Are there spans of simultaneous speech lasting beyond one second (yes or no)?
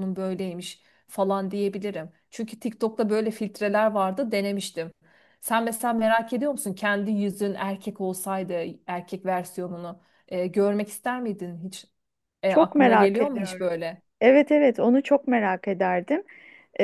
yes